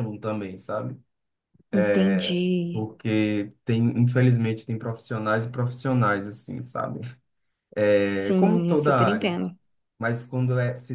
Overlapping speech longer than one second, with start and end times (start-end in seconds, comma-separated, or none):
8.2-9.4